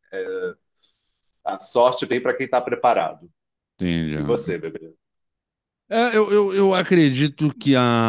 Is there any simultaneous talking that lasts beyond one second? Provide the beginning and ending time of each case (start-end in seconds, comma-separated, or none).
none